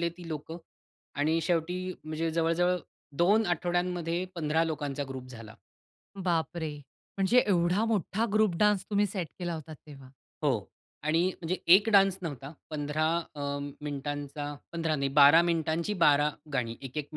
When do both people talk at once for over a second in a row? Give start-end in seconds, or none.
none